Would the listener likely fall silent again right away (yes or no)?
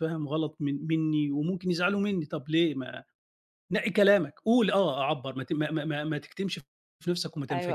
no